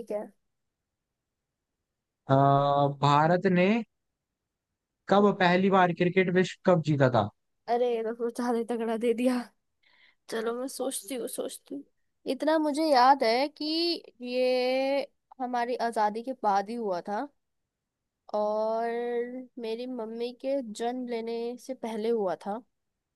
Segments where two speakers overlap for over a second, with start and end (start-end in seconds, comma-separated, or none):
none